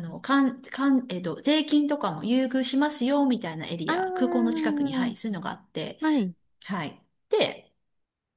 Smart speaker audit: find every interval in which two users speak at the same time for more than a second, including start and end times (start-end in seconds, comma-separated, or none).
3.9-5.2